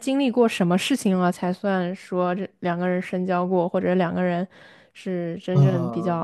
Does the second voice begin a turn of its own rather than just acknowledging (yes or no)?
yes